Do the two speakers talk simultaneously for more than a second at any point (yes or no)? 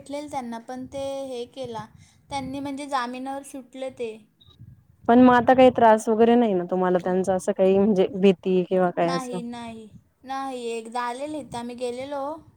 no